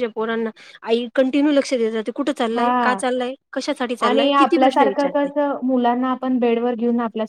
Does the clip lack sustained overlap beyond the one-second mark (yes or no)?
no